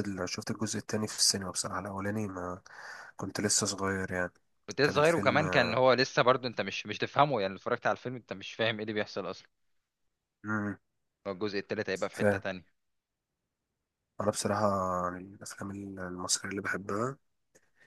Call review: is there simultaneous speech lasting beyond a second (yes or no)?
no